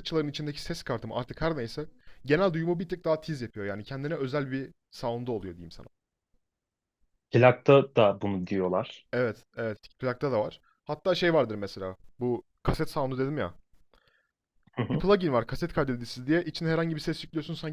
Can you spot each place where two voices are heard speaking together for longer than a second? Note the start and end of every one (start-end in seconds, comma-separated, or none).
none